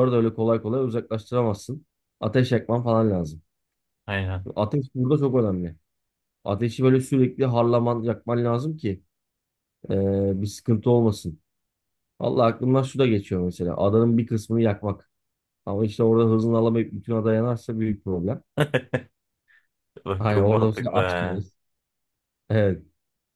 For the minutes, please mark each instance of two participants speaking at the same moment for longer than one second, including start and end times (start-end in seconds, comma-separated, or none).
20.2-21.4